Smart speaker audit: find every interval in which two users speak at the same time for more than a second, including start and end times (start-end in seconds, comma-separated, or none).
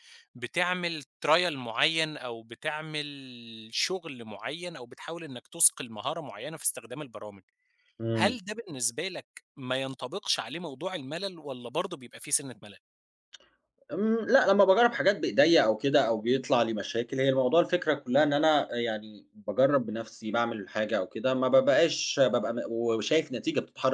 none